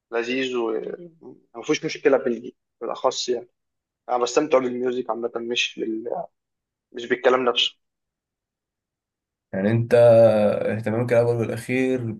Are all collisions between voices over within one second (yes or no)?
yes